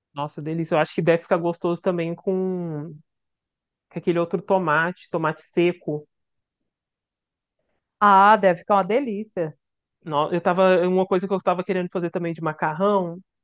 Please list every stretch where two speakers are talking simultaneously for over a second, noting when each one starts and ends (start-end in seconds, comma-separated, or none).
none